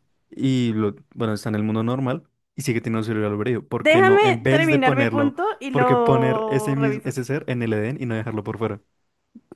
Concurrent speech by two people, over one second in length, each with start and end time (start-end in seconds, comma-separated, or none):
3.8-7.2